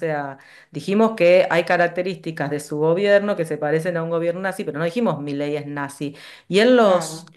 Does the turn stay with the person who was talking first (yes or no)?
yes